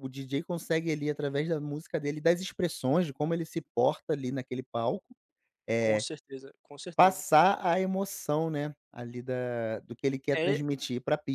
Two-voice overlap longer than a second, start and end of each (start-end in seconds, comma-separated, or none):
none